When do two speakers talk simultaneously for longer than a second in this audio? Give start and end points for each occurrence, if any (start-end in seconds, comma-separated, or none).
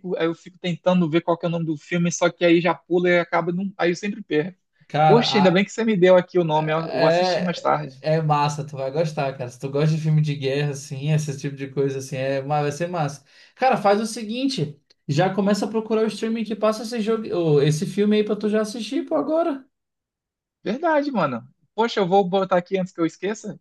6.5-8.0